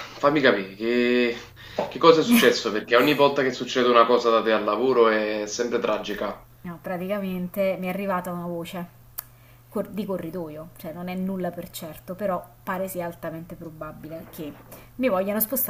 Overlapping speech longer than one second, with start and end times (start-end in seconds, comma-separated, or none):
none